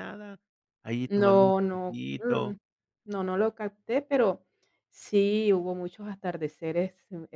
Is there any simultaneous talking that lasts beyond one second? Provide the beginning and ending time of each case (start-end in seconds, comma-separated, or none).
1.1-2.5